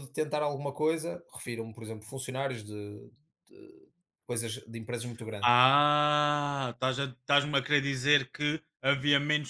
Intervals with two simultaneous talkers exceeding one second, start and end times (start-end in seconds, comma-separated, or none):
none